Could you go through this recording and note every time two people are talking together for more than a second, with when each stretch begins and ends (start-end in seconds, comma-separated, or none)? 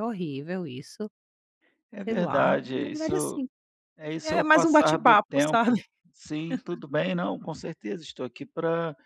2.0-3.4, 4.2-5.7